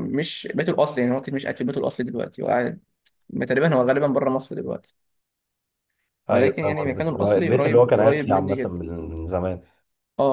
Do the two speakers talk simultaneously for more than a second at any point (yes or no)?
yes